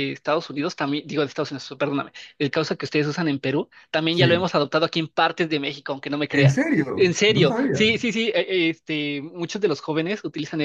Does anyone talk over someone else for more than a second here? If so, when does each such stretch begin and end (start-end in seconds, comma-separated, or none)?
6.3-7.9